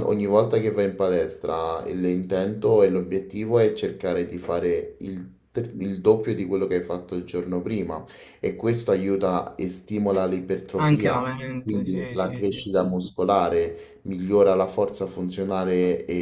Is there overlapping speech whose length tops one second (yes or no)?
yes